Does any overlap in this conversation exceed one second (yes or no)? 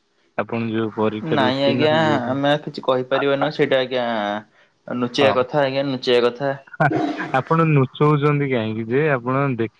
no